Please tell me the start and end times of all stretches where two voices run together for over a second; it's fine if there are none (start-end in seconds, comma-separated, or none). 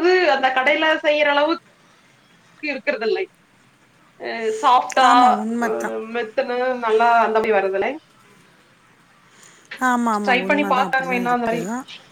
10.2-11.6